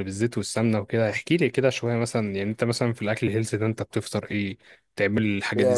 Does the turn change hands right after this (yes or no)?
yes